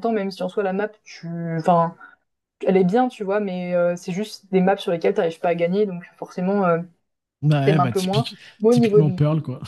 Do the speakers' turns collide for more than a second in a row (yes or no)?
yes